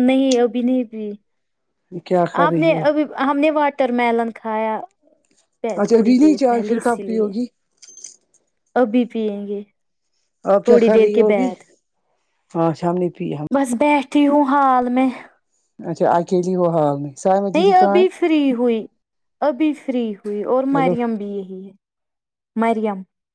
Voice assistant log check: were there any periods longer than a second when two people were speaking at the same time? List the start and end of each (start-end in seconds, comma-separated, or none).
5.8-7.3